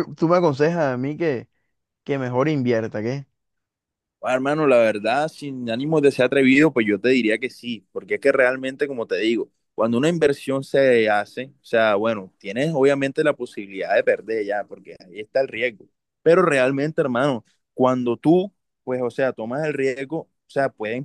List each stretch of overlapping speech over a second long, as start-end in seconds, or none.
none